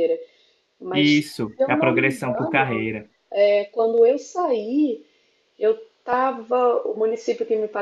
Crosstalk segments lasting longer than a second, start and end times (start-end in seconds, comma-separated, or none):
1.2-2.9